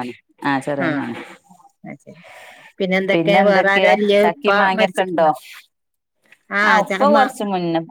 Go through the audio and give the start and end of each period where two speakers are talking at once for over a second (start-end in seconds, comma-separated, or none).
3.5-5.3